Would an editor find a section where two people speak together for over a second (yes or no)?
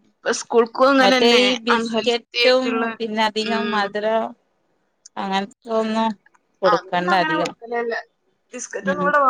yes